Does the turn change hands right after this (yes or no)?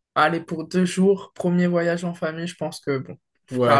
yes